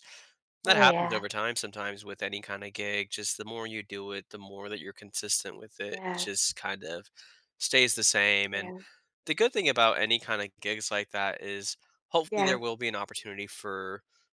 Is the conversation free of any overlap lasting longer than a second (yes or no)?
yes